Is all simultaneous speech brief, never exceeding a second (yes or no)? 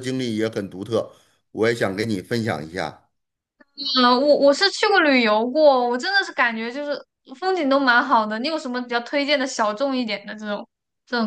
yes